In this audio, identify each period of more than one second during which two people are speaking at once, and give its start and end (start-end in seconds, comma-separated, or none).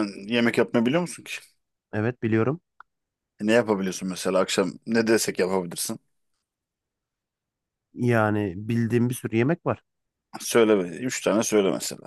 none